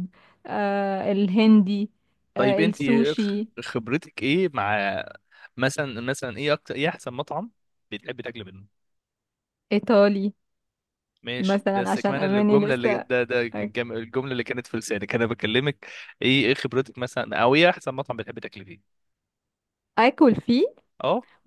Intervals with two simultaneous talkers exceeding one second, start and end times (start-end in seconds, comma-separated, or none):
11.4-13.1